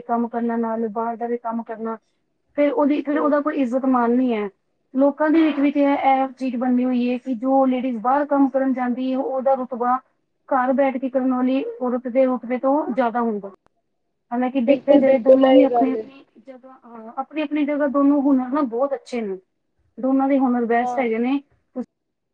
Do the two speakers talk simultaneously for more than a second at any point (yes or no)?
yes